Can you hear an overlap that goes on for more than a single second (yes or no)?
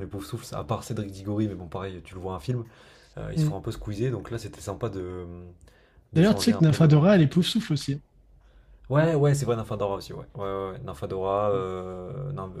yes